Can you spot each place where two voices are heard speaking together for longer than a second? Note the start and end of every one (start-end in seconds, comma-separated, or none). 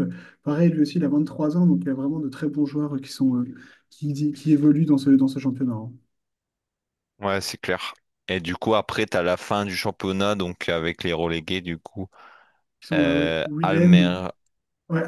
12.9-14.2